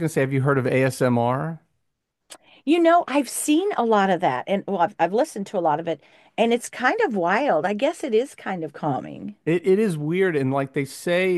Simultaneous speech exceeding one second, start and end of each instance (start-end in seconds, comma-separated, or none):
none